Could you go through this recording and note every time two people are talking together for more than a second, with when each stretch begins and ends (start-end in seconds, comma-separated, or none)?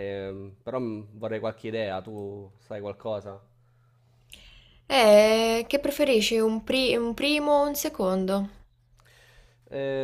none